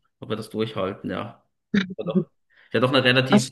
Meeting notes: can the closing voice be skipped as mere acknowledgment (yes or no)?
yes